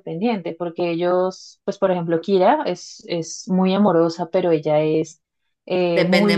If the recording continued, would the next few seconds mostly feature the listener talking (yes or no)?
no